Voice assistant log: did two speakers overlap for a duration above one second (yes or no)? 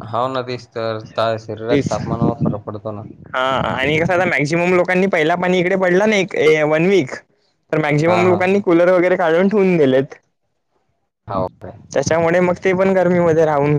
no